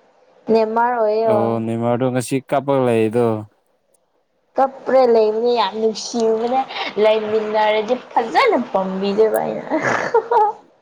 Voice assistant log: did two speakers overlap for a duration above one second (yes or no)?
no